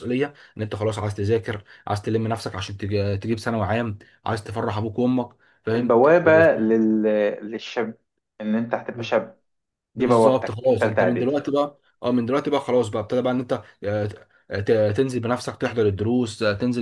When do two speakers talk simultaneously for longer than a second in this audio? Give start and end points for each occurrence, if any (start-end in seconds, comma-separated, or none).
9.9-11.3